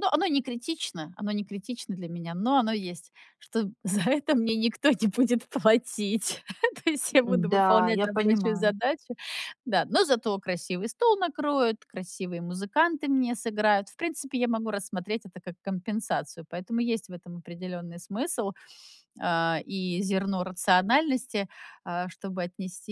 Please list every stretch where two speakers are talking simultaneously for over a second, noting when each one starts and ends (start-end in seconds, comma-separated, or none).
7.2-8.7